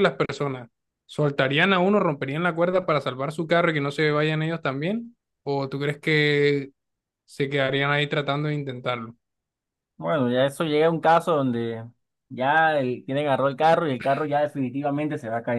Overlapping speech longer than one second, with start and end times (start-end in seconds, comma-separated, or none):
none